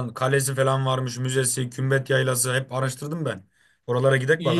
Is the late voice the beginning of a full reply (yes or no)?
yes